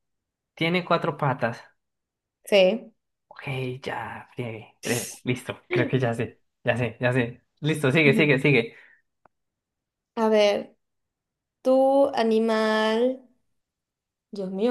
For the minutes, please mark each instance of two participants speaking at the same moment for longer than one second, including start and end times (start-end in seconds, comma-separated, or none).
none